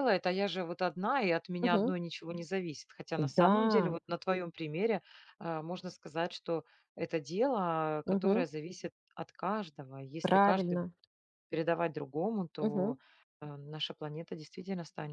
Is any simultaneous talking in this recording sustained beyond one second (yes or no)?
no